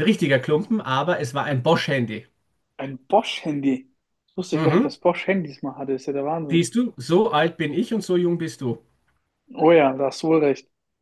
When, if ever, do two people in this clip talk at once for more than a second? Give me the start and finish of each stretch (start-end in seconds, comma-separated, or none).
none